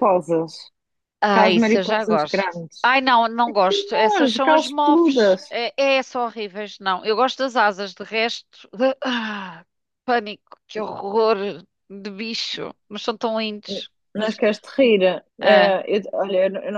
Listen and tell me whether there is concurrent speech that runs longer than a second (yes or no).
yes